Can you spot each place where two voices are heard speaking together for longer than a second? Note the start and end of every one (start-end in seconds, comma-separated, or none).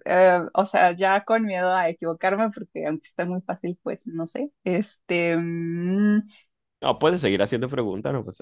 none